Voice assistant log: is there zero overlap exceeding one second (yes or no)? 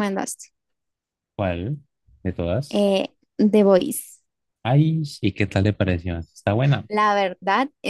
yes